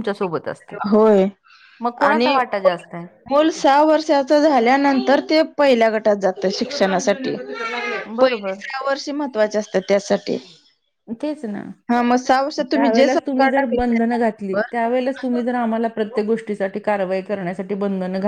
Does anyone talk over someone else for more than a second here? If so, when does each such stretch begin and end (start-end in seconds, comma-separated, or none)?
12.7-14.7